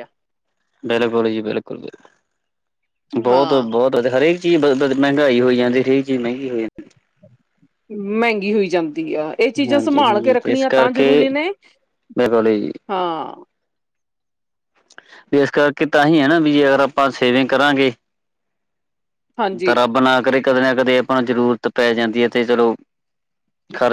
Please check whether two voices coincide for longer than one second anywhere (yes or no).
yes